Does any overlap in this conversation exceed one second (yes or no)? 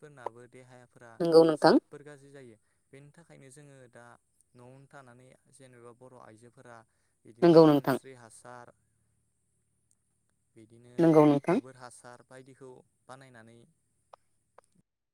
no